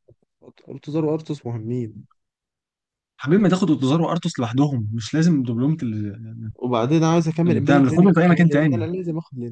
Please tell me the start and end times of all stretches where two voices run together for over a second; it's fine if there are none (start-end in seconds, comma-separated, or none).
7.5-8.9